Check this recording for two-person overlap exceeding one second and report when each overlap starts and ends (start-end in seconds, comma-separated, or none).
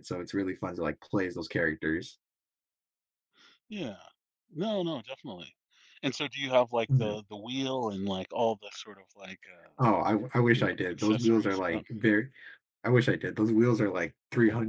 10.5-11.8